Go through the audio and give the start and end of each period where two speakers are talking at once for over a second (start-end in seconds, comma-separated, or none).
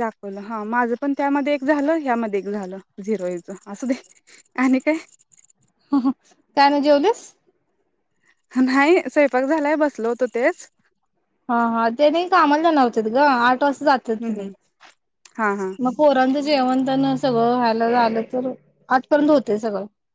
none